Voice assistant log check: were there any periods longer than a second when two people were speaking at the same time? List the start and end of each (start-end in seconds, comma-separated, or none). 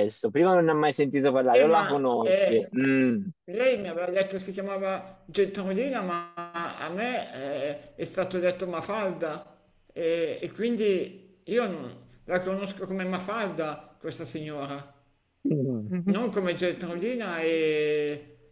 1.5-2.7